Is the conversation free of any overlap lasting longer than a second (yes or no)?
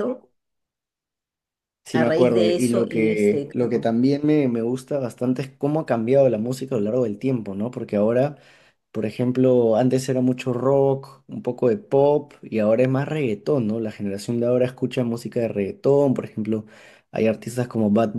no